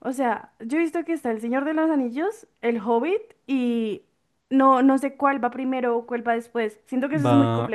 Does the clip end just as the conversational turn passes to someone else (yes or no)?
yes